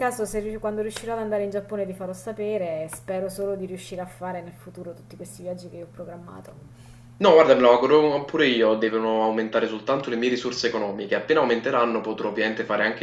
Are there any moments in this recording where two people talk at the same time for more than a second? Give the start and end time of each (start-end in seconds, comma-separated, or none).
none